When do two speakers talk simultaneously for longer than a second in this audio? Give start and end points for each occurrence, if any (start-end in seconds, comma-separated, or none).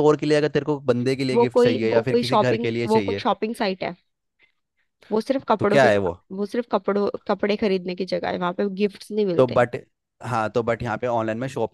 1.3-3.2